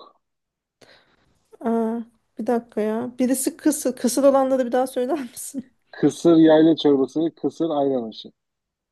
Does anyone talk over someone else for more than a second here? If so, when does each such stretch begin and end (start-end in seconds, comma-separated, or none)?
none